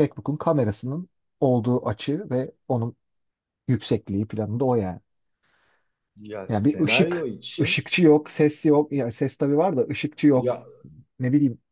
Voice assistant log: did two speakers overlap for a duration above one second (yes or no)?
yes